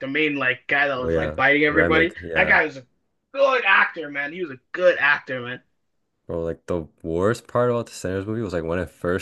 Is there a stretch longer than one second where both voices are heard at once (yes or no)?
yes